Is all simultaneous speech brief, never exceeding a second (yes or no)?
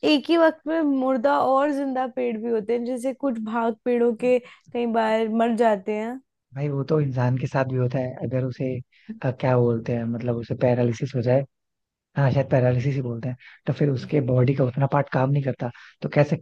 yes